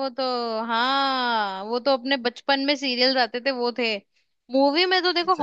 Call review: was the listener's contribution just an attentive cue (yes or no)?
yes